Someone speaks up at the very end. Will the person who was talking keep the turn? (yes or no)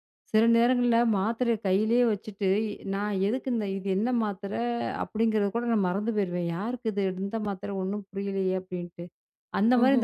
yes